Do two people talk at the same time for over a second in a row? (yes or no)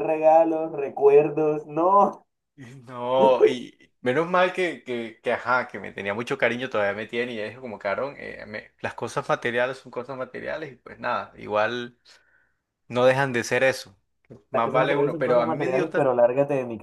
yes